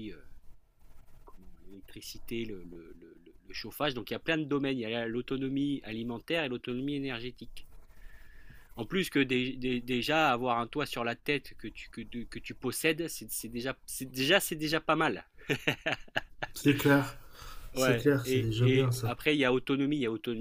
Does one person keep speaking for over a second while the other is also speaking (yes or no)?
yes